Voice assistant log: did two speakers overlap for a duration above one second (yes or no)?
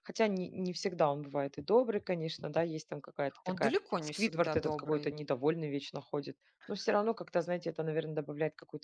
yes